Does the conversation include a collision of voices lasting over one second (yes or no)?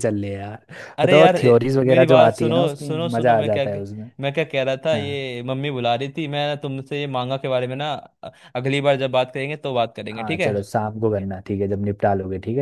yes